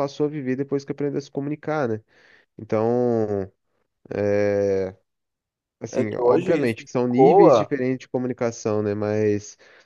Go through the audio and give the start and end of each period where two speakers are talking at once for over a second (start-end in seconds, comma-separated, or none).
5.9-7.7